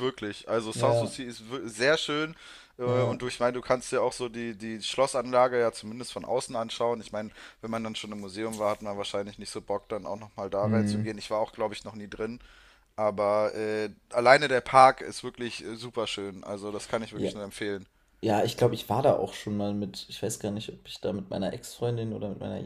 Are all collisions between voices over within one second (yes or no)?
yes